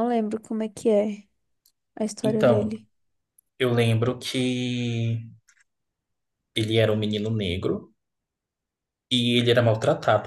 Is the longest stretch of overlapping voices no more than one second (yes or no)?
yes